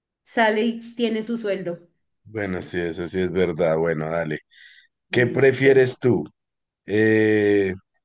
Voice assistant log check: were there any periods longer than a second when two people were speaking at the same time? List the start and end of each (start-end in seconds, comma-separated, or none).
none